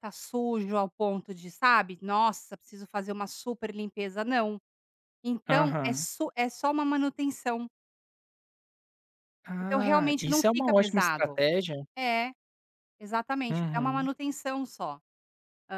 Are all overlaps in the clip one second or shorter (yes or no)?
no